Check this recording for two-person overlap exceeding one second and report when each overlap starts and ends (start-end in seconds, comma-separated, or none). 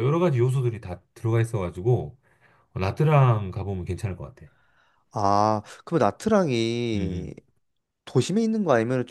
none